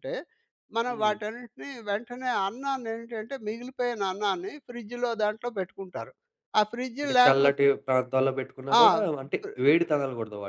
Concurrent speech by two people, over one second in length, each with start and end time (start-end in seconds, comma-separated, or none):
none